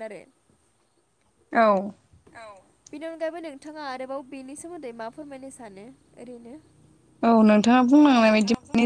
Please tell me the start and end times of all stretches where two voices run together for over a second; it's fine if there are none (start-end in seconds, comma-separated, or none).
none